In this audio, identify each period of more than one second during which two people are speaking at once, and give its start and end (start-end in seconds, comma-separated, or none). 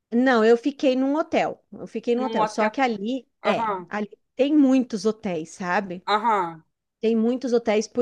none